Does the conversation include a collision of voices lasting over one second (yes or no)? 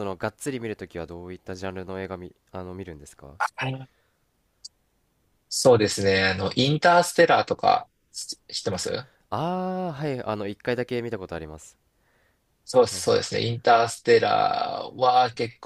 no